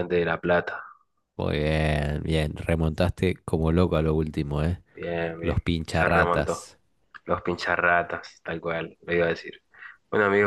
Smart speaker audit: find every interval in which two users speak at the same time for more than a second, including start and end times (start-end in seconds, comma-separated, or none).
5.4-6.7